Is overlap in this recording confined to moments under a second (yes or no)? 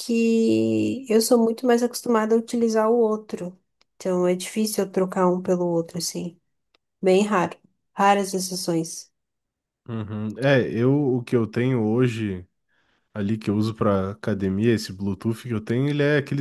yes